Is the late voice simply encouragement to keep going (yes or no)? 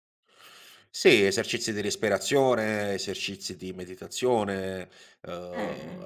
yes